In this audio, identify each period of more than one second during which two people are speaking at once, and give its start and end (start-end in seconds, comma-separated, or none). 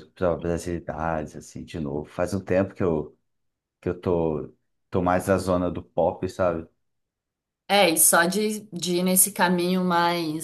none